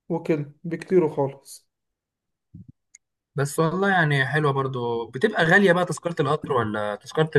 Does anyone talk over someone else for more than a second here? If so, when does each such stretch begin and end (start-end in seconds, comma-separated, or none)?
none